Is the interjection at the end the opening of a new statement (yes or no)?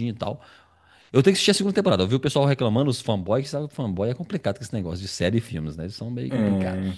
yes